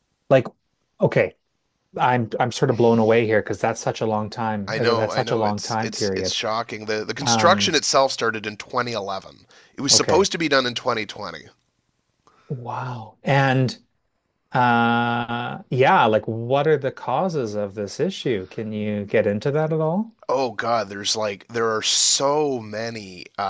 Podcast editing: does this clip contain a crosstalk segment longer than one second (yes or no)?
yes